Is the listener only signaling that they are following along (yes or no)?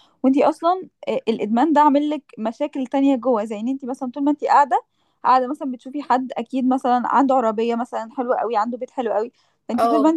yes